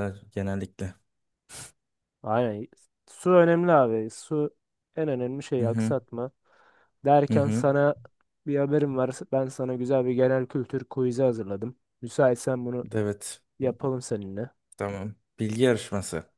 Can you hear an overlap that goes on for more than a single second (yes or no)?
no